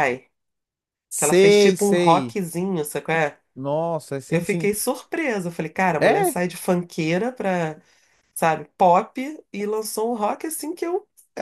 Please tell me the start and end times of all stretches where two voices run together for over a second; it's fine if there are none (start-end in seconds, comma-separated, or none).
1.1-2.4